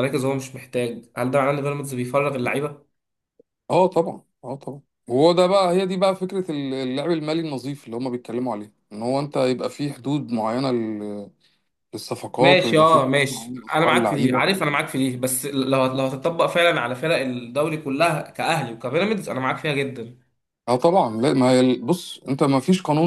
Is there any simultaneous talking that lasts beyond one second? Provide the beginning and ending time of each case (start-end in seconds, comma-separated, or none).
12.4-14.6